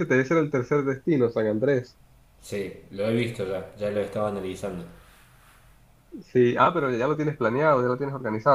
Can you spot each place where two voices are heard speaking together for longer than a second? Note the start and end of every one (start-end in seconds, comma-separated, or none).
none